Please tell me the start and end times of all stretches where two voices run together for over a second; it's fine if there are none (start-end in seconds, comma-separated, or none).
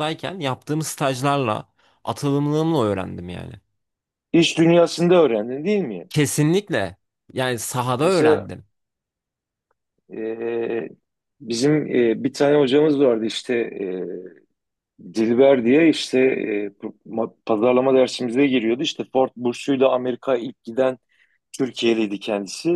none